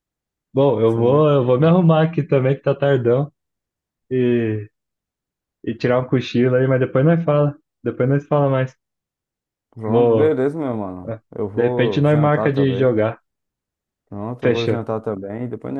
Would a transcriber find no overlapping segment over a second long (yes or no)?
no